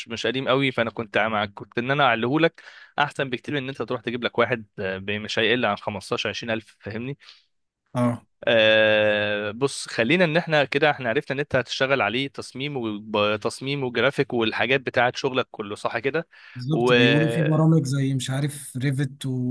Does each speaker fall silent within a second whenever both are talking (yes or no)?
yes